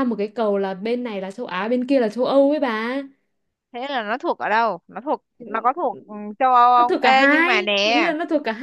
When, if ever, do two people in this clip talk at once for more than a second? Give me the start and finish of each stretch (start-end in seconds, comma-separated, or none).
6.8-8.0